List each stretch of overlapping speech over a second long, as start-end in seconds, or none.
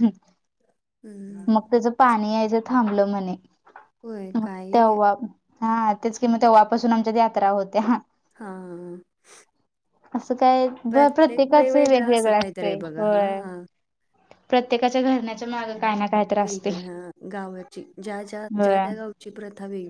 11.6-13.1